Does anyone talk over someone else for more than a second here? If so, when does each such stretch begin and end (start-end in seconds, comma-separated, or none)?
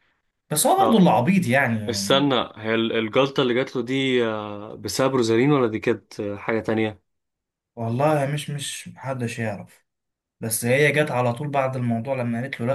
none